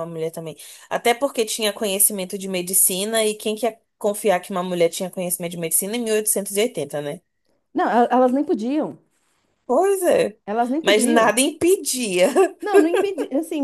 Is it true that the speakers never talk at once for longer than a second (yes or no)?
yes